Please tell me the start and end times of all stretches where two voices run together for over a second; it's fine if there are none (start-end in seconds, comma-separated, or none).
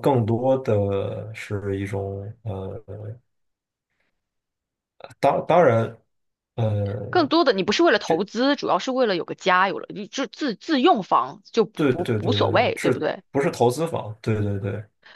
11.7-13.2